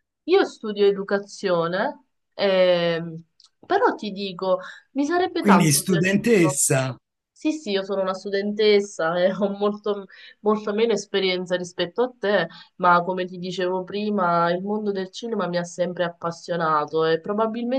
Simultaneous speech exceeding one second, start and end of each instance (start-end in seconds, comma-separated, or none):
5.4-6.6